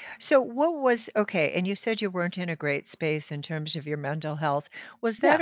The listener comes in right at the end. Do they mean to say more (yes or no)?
no